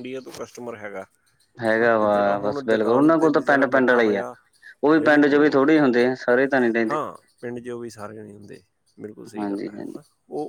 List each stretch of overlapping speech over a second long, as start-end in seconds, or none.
1.8-4.2